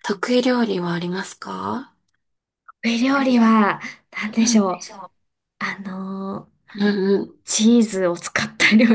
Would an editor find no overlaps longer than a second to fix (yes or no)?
yes